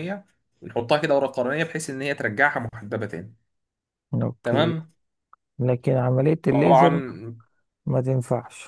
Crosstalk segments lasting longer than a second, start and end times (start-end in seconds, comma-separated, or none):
none